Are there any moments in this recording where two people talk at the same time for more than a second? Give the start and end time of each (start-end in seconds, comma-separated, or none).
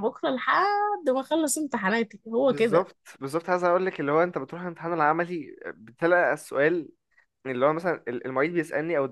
none